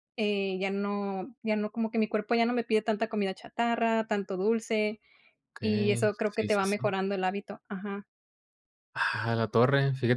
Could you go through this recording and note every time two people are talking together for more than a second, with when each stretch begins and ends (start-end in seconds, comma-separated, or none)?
5.6-6.9